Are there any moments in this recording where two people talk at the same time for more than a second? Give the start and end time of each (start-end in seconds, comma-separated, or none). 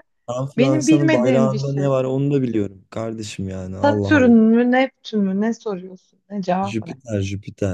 0.6-1.9